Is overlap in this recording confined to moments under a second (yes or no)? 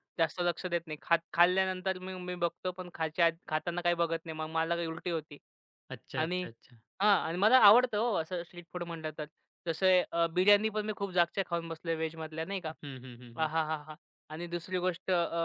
yes